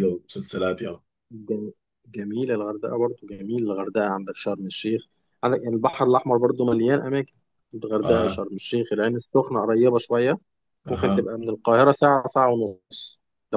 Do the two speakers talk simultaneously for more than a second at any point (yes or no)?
no